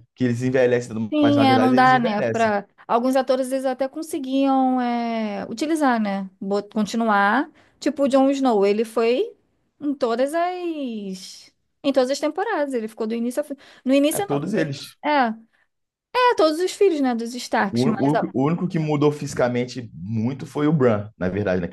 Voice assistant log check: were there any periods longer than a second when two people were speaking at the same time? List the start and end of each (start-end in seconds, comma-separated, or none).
1.1-2.5